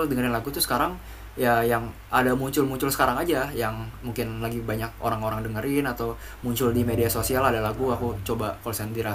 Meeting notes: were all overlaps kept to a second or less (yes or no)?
no